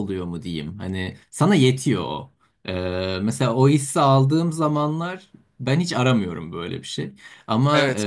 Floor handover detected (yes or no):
no